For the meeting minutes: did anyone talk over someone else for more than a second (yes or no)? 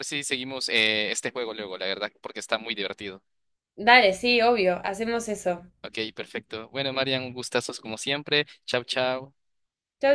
no